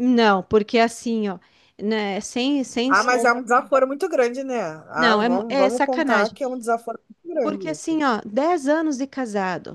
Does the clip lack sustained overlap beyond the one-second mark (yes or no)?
no